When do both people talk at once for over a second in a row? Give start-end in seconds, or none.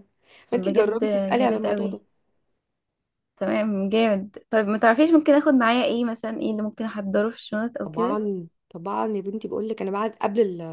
0.5-2.0